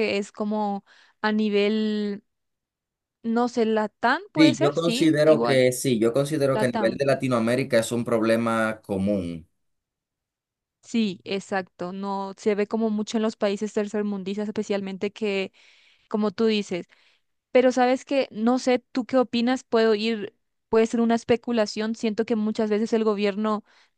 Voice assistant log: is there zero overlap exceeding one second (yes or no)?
no